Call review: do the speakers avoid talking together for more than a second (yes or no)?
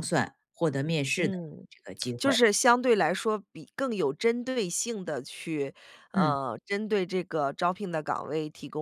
yes